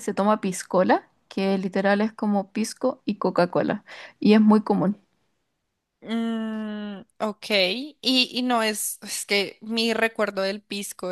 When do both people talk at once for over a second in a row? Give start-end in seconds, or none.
none